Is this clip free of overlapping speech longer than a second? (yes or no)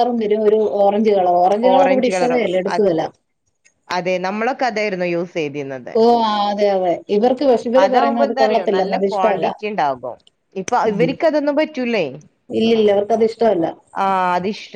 no